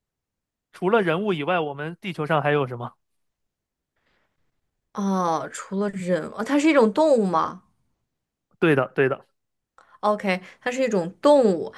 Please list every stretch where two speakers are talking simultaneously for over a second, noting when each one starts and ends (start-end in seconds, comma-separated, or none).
none